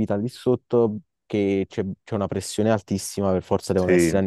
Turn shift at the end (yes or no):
no